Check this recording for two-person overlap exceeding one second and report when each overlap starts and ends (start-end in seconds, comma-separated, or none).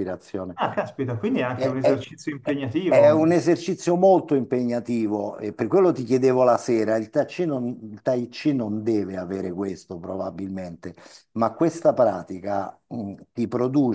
none